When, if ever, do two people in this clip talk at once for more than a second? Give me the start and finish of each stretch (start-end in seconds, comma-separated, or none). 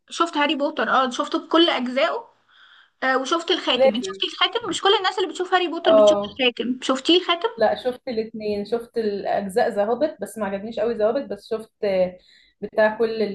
none